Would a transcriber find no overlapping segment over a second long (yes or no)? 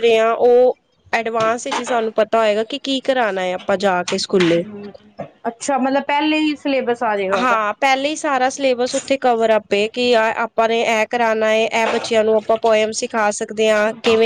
yes